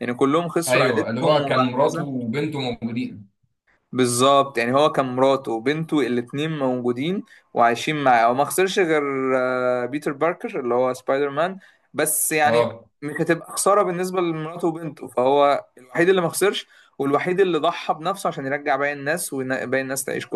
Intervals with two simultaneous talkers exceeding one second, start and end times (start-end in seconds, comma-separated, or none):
0.7-2.1